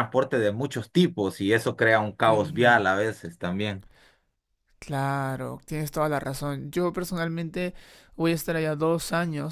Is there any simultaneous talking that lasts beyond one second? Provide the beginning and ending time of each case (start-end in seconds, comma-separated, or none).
none